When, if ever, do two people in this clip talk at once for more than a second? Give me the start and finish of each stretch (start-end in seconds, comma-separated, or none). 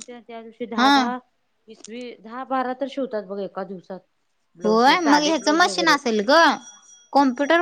4.7-5.9